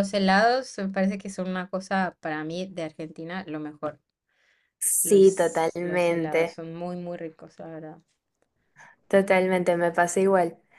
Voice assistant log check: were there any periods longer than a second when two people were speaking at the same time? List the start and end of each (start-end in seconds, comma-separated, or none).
5.0-6.6